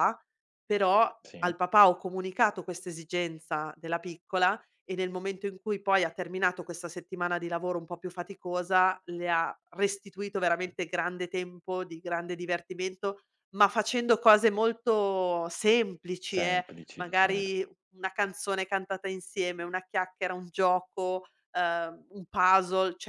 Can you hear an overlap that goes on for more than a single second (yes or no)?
yes